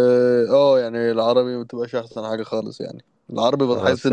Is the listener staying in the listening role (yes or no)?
yes